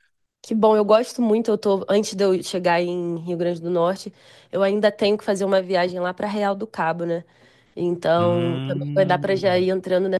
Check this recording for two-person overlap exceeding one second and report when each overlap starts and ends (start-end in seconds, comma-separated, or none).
8.2-9.7